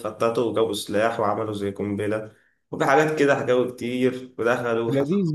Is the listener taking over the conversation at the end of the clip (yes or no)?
yes